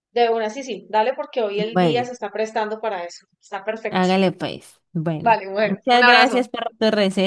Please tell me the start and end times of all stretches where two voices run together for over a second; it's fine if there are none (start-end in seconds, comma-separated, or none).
5.2-6.5